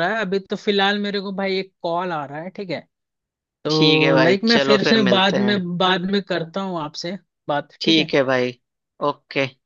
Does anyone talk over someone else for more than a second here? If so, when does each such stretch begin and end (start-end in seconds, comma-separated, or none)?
3.7-5.5